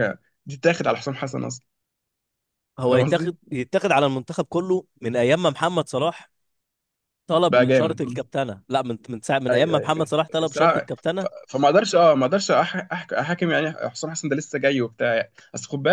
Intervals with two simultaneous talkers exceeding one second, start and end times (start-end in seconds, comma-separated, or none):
9.5-11.3